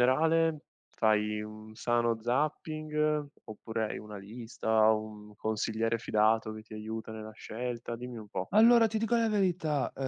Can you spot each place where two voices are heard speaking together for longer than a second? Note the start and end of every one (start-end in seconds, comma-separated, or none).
none